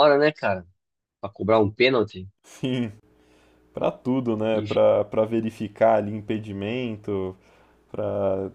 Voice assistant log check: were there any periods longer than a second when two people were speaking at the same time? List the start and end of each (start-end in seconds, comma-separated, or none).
none